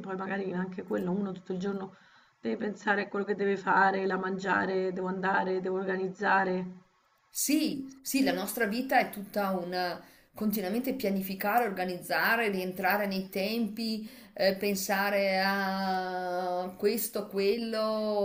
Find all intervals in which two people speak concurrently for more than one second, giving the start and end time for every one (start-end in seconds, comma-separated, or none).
none